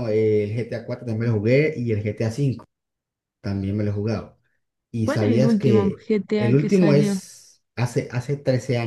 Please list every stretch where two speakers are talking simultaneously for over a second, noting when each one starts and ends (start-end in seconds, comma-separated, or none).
5.0-7.2